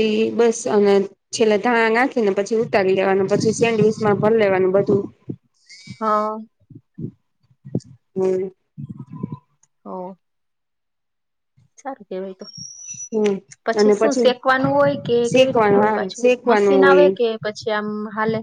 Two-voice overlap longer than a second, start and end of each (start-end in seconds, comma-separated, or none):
15.3-17.1